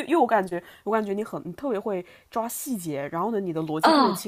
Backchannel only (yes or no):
yes